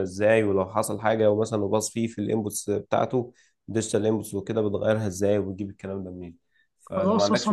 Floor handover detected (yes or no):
yes